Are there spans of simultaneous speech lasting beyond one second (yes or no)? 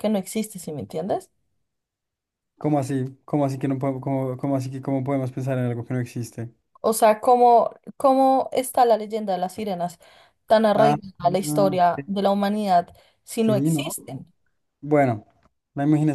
yes